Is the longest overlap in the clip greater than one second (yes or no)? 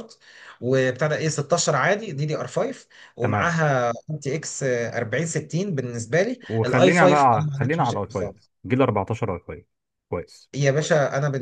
yes